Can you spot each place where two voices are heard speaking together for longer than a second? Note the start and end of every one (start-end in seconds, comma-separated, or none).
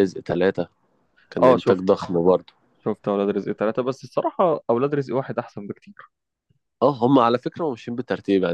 none